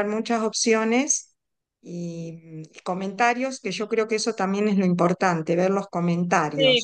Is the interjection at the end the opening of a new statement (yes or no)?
yes